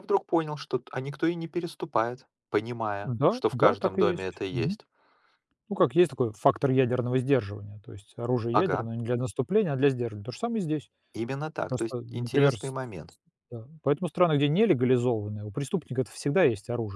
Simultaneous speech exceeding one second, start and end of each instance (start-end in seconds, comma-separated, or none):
3.0-4.8, 11.7-13.2